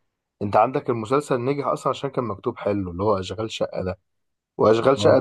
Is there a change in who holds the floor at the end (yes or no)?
no